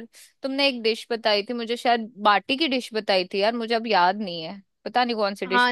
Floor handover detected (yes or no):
yes